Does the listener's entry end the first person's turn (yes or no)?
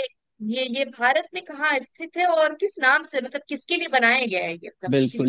yes